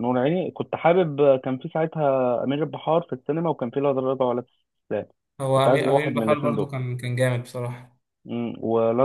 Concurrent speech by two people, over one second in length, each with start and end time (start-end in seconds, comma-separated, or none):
5.5-6.7